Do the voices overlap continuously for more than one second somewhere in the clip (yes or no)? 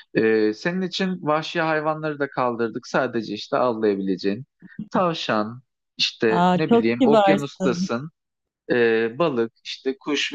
yes